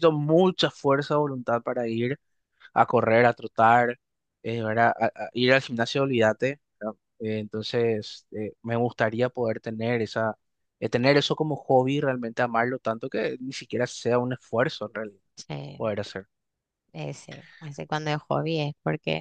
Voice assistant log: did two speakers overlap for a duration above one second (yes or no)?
no